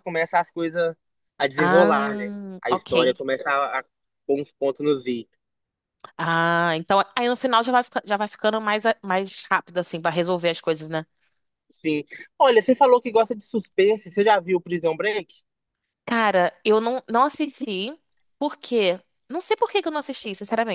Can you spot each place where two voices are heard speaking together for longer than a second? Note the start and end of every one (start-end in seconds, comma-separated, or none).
1.6-3.2